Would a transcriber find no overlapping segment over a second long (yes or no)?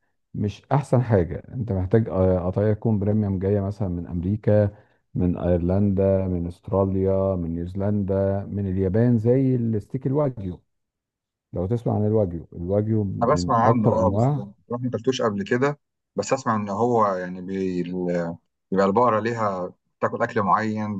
no